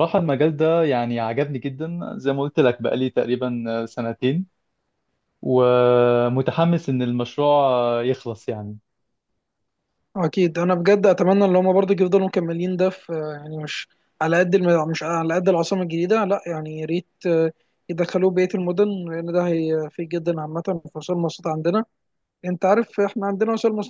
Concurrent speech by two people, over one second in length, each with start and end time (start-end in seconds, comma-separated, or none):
none